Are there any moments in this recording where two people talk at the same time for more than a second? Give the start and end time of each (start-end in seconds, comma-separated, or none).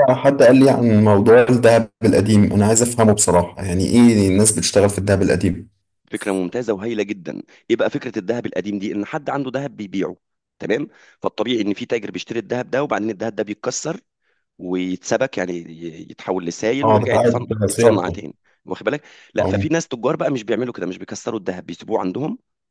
16.8-18.2